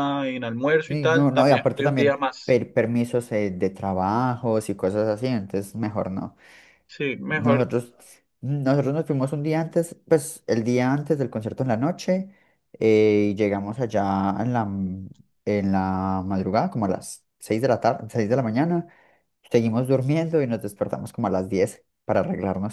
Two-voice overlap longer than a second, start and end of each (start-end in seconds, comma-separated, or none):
0.9-2.6